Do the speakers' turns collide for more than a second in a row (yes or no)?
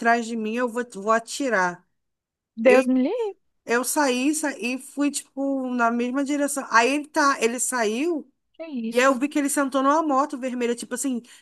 no